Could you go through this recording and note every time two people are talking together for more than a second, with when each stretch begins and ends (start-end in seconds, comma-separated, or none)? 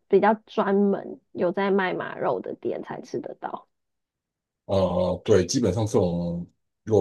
none